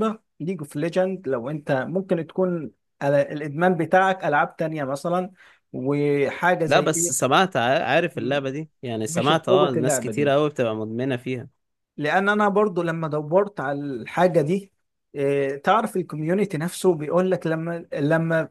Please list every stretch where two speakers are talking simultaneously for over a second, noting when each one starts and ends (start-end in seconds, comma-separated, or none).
9.1-10.3